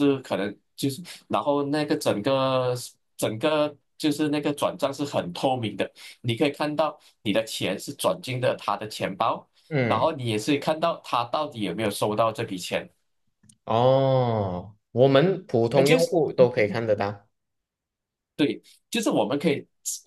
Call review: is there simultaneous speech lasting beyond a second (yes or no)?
no